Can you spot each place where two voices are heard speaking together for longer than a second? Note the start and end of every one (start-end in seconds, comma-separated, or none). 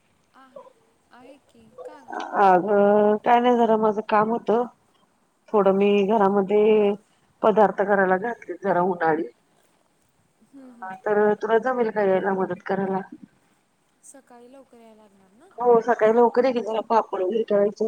none